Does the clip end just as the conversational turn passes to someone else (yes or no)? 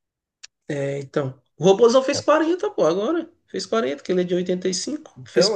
yes